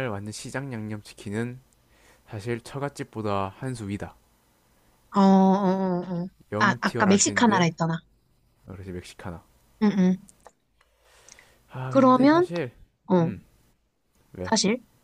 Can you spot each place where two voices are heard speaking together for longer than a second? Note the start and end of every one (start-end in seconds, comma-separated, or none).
6.5-7.7